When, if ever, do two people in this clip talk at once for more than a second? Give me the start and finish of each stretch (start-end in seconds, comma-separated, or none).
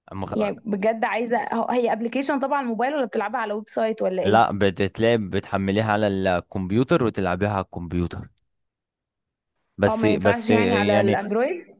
9.9-11.2